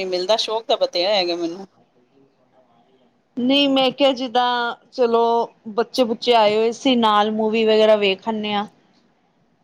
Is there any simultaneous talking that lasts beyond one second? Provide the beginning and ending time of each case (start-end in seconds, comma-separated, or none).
none